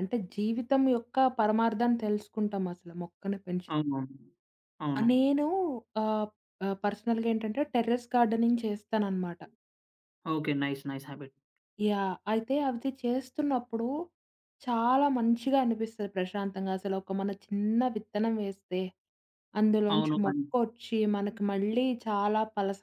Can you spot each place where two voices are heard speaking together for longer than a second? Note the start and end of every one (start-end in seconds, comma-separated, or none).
none